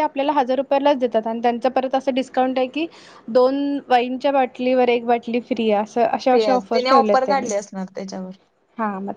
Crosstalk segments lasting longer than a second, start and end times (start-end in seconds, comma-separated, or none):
6.3-7.5